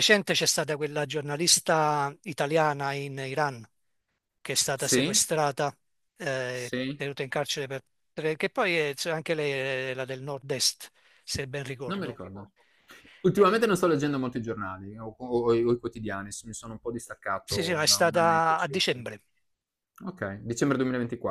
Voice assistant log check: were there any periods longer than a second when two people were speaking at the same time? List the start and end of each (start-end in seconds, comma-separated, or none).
17.4-19.0